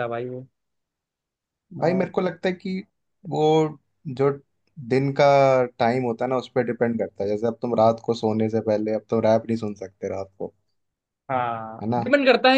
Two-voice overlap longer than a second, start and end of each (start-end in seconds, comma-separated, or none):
none